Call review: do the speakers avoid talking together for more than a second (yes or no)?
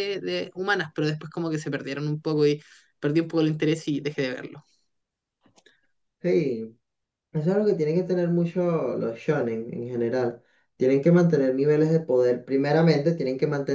yes